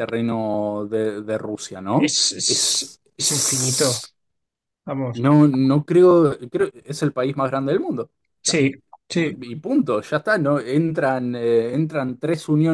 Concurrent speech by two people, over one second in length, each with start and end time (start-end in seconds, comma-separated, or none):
1.9-4.0